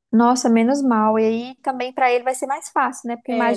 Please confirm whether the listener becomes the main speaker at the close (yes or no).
no